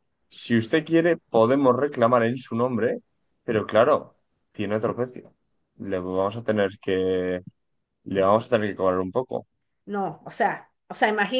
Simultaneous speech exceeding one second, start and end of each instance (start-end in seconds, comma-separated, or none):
none